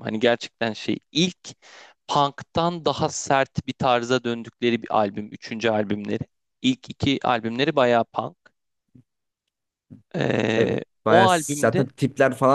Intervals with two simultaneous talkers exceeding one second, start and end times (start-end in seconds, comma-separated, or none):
10.5-11.9